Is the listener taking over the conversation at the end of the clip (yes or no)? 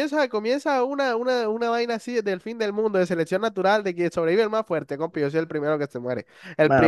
yes